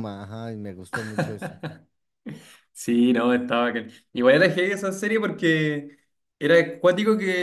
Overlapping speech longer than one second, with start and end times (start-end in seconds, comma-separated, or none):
none